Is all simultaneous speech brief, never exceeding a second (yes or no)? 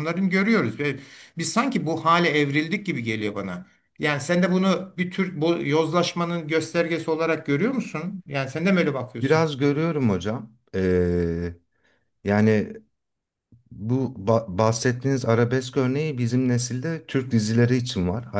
yes